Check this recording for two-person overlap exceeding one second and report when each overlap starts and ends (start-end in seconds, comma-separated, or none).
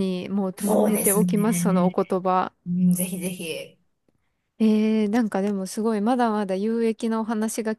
0.6-1.9